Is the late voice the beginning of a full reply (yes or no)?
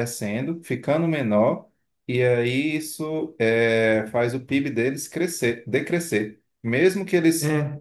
no